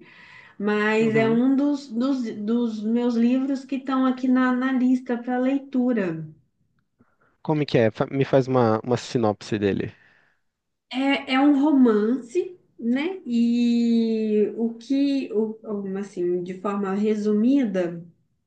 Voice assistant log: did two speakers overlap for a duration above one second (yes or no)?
no